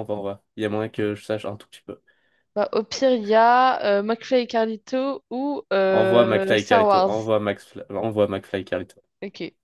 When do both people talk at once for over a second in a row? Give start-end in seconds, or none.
5.9-7.1